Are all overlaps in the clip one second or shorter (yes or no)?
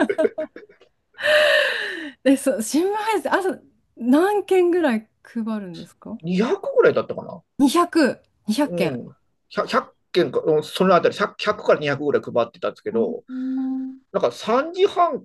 yes